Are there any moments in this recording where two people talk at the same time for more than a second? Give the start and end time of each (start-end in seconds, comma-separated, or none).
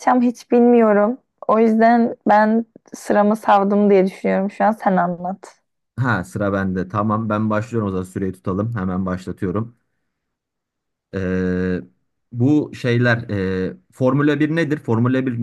none